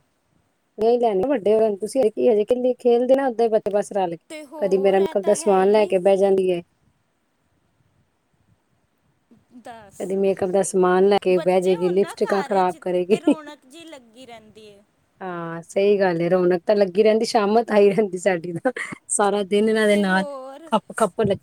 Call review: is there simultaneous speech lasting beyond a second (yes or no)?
yes